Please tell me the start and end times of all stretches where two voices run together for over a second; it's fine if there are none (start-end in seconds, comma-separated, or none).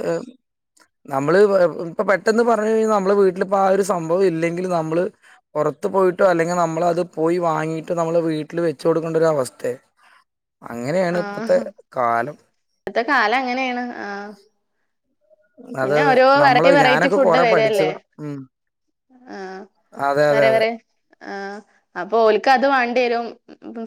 16.4-17.9